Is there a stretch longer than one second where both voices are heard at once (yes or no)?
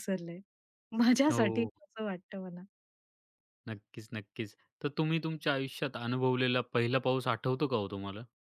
no